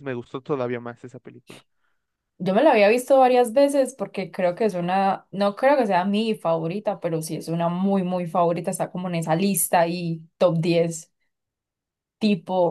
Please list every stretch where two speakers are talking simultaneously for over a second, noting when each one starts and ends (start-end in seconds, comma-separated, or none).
none